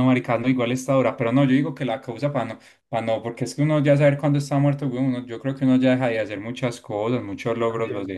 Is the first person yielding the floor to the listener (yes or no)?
yes